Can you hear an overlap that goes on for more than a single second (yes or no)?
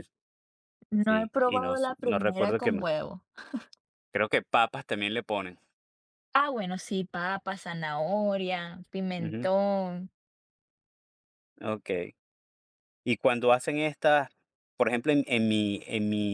yes